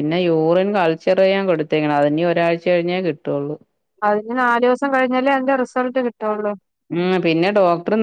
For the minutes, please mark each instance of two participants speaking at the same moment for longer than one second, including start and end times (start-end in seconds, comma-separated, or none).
none